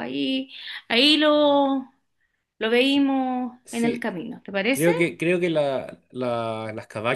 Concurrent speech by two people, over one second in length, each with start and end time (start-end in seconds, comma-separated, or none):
none